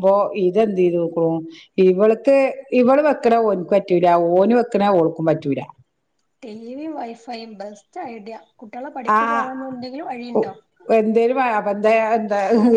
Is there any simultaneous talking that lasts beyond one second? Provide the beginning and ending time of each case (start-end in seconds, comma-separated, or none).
9.2-10.4